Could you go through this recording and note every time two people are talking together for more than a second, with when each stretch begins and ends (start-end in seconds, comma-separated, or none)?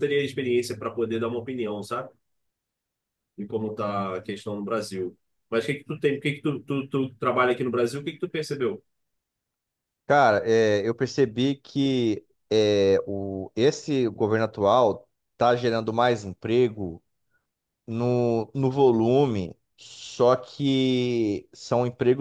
none